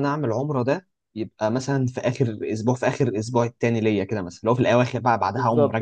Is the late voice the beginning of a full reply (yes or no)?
yes